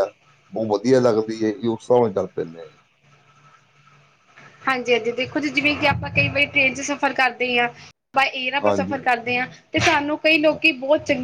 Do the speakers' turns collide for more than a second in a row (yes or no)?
no